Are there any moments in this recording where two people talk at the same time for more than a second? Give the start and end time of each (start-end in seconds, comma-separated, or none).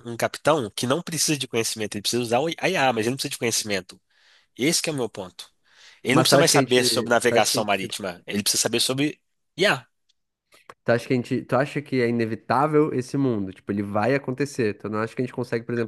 6.1-7.9